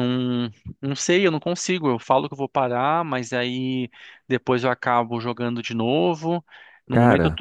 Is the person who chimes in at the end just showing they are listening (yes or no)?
yes